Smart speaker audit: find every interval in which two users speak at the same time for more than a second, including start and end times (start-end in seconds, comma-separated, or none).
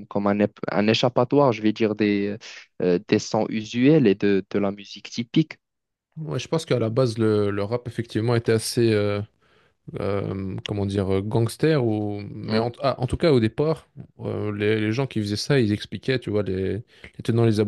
none